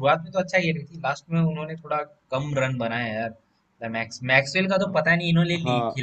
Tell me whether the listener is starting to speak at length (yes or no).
yes